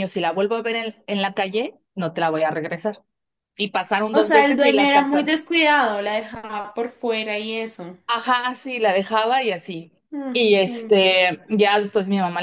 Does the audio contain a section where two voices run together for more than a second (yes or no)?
yes